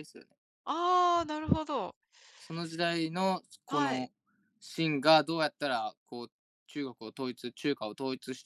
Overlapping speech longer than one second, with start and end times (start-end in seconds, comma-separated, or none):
none